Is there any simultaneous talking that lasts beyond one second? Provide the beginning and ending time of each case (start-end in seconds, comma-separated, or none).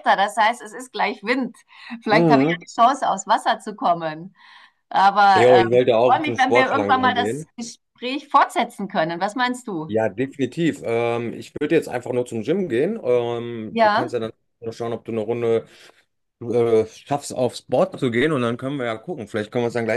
5.3-7.5